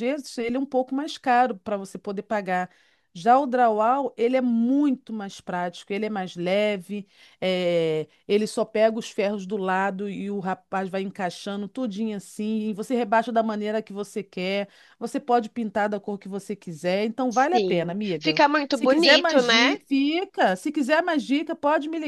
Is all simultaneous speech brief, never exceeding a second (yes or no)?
no